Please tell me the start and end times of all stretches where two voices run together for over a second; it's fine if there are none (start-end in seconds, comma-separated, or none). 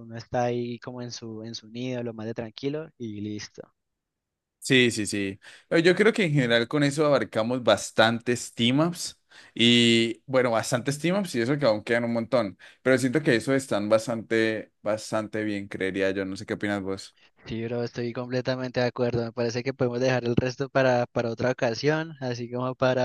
none